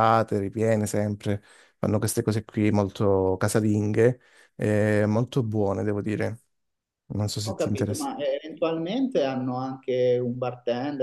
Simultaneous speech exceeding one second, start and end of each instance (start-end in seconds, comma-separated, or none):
none